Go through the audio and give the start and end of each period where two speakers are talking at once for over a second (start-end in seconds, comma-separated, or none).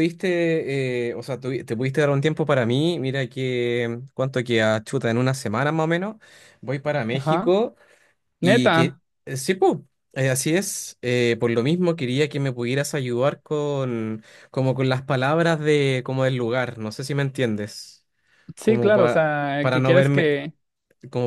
18.6-20.3